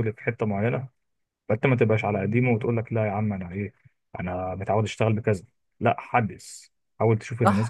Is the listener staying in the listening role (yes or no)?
no